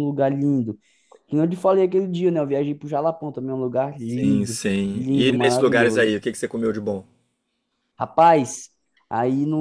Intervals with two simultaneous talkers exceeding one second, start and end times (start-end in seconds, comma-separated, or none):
4.0-6.2